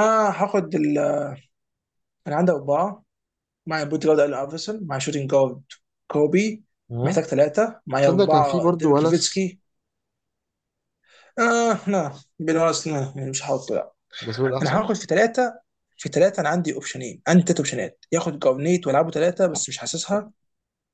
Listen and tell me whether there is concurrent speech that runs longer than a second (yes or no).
yes